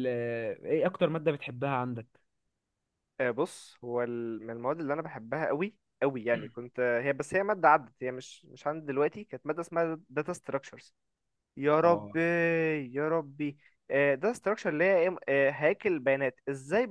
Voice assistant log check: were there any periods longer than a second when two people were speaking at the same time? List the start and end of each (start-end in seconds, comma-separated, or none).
none